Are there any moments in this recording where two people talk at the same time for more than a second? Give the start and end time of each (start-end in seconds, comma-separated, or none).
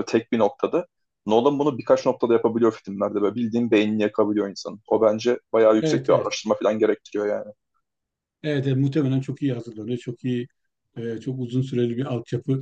none